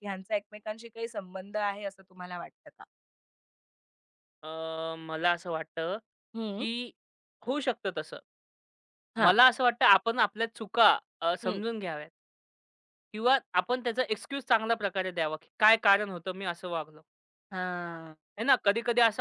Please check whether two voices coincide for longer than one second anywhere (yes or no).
no